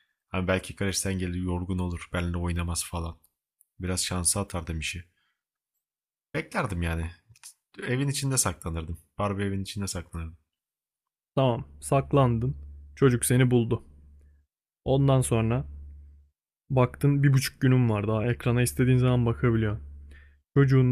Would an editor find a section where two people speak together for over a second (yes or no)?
no